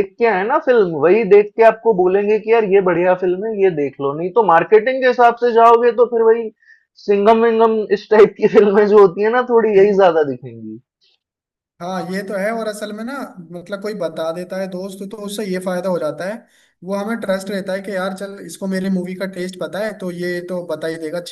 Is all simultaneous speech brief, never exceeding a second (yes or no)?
yes